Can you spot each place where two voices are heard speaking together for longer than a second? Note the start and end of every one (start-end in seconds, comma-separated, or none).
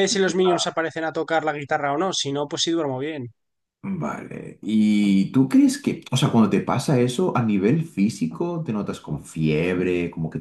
none